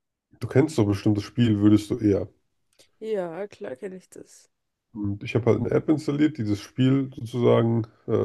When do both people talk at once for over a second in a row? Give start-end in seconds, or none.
none